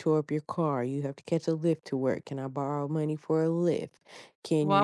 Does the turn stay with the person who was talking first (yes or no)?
no